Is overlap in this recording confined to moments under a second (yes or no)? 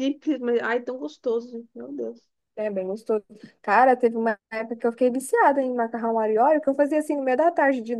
yes